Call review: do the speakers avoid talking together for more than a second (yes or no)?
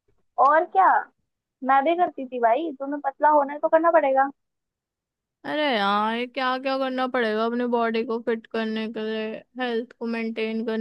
yes